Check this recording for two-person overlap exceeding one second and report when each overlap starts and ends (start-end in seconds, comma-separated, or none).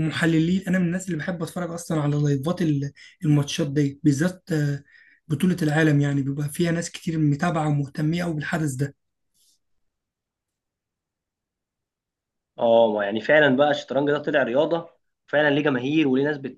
none